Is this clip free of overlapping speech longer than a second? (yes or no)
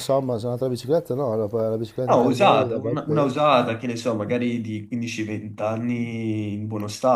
no